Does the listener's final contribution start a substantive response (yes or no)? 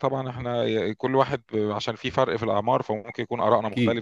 yes